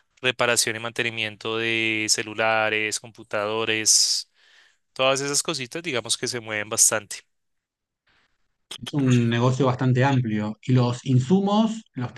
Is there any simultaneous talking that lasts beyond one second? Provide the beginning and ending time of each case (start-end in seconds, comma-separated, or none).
none